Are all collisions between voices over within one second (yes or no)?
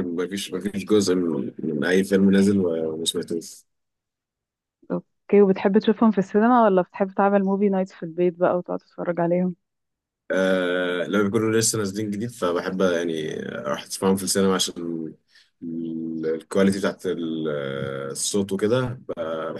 yes